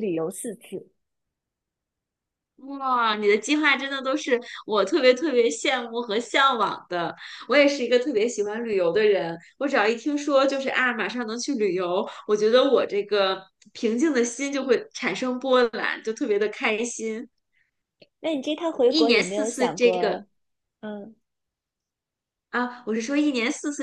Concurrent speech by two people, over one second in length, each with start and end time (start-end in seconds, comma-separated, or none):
18.9-20.2